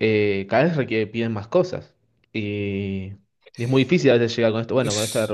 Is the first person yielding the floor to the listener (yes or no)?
no